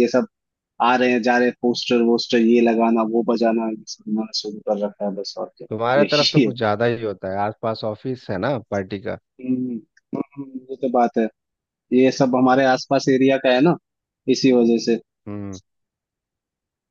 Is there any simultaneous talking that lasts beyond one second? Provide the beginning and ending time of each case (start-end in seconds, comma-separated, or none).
none